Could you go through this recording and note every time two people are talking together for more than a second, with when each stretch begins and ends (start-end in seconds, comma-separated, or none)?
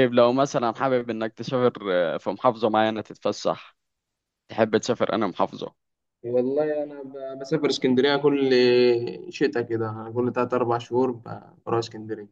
none